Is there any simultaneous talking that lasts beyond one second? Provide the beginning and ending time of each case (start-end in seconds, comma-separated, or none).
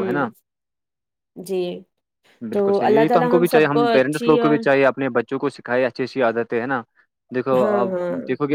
2.5-4.6